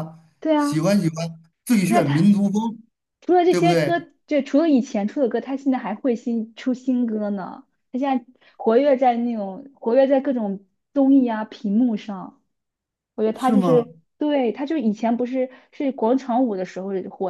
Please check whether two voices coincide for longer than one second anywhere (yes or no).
no